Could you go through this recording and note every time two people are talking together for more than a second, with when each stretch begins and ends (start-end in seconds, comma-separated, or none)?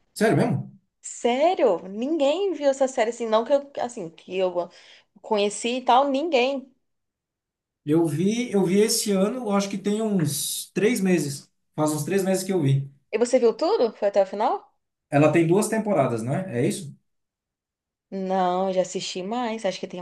none